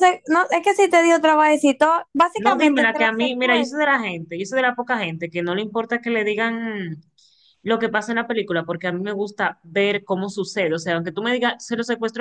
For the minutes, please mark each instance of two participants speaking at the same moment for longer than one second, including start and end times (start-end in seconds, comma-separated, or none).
2.4-3.9